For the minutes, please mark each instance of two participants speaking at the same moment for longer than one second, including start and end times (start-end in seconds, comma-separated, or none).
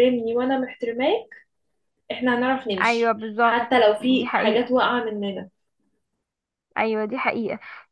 2.8-4.7